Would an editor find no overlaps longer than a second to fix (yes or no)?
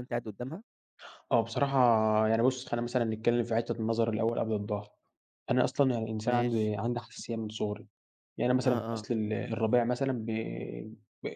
yes